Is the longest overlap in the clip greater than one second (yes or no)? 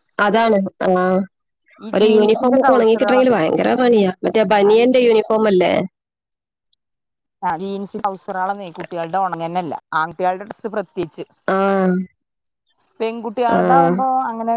yes